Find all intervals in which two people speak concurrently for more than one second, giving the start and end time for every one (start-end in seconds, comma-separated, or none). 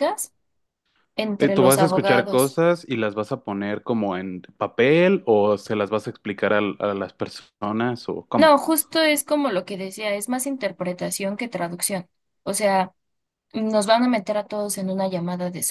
1.4-2.6